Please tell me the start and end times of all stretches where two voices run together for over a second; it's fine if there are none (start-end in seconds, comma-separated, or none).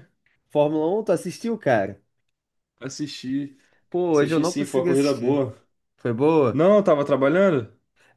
4.1-5.4